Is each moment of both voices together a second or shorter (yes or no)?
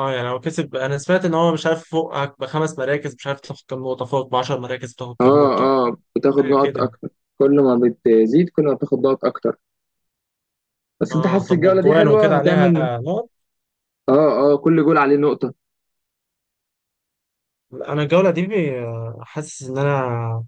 no